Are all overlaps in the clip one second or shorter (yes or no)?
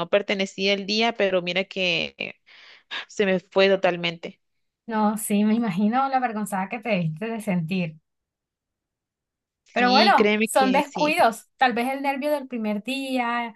no